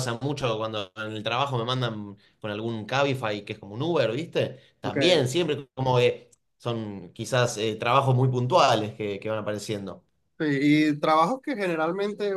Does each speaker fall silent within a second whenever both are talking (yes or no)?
yes